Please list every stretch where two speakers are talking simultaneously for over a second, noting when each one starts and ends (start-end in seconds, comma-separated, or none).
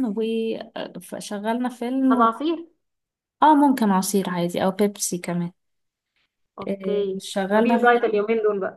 6.7-8.2